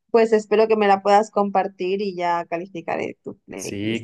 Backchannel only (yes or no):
no